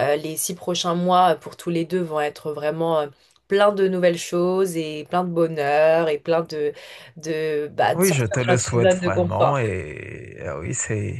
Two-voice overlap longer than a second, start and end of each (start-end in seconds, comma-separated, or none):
8.0-9.6